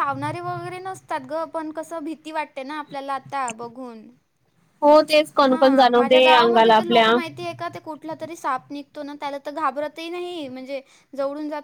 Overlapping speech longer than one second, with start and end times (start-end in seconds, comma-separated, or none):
5.5-7.1